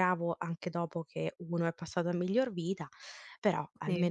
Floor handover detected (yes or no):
yes